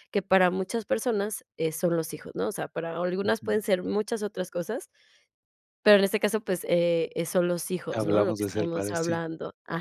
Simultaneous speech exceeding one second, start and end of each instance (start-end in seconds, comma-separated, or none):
7.9-9.2